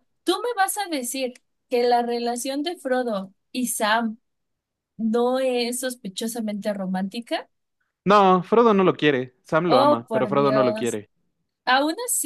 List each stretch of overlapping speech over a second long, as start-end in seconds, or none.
9.7-11.0